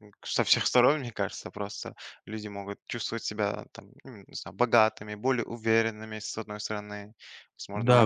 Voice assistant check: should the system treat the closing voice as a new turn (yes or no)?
yes